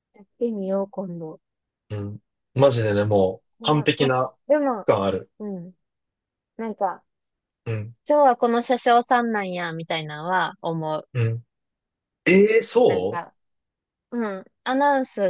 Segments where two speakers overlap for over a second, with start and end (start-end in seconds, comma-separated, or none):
none